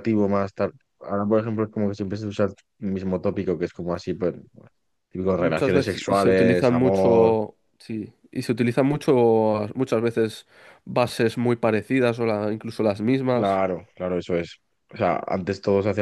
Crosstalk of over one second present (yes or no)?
yes